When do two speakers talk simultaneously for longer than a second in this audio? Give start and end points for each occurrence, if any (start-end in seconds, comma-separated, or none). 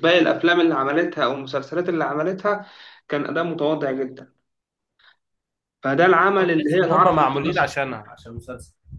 6.4-7.7